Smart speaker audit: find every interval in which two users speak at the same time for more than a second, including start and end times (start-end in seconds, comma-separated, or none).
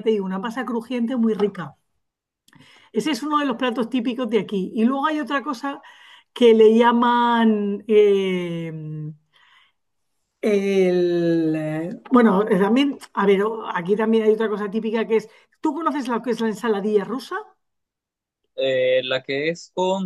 none